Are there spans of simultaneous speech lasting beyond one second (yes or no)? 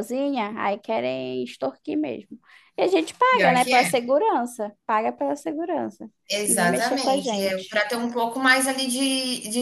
yes